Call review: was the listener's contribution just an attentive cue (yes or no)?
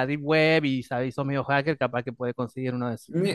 no